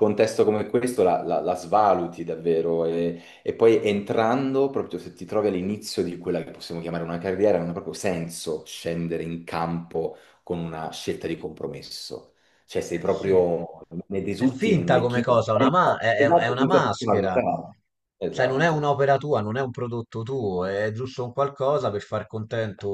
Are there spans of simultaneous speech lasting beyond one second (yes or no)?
yes